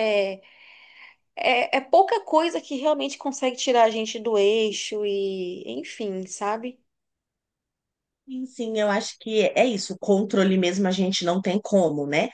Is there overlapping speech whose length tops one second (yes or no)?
no